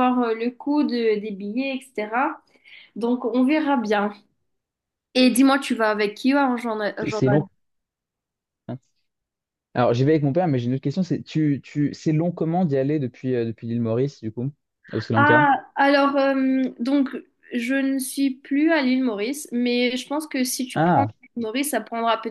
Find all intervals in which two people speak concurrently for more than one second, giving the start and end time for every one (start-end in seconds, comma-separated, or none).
none